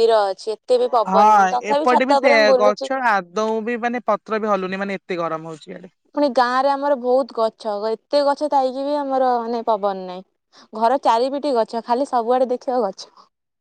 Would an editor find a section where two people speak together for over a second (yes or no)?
yes